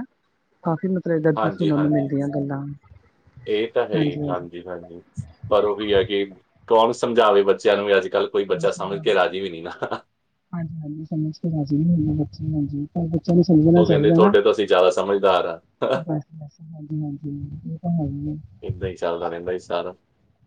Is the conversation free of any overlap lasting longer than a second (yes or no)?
yes